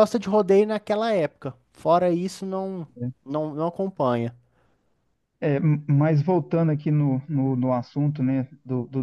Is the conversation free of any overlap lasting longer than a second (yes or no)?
yes